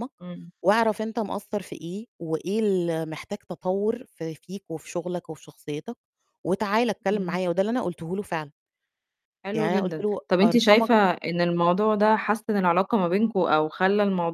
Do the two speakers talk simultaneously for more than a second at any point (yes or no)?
yes